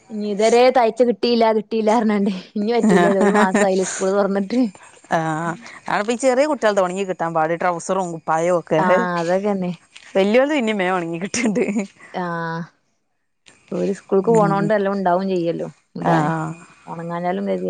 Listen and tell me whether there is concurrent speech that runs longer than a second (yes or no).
no